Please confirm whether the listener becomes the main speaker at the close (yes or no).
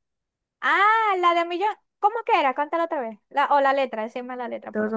yes